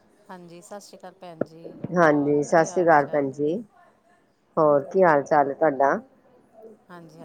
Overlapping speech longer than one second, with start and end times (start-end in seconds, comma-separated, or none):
2.0-3.6